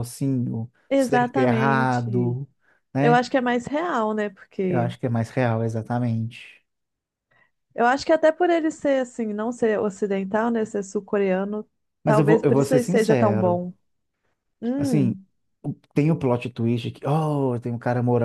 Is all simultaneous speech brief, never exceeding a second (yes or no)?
no